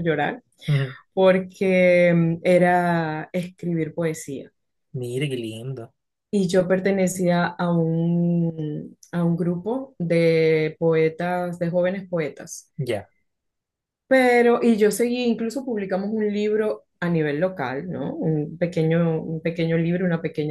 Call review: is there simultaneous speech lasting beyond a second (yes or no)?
no